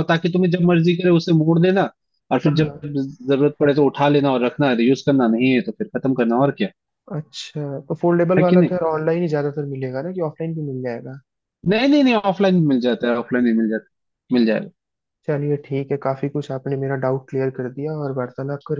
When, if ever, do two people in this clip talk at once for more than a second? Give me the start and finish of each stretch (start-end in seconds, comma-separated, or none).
none